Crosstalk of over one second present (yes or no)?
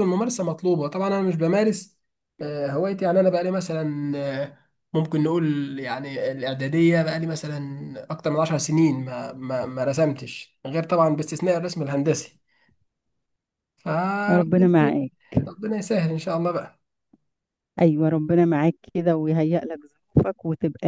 no